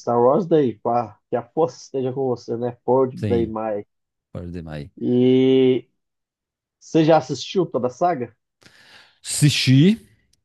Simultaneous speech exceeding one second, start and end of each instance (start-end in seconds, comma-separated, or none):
none